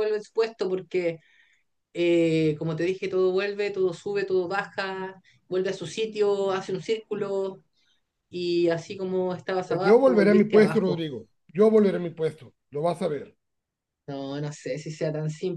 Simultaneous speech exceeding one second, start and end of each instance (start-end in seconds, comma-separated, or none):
9.7-11.1